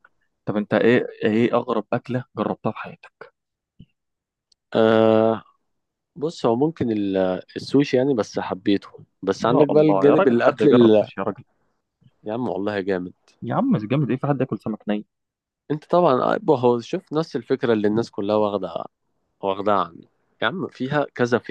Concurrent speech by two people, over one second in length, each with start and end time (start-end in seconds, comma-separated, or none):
9.4-11.1